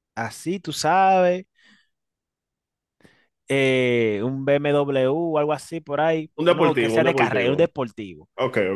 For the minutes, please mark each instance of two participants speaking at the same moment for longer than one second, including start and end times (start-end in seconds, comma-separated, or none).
6.4-7.7